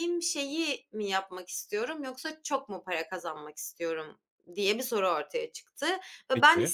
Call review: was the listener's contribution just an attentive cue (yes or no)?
yes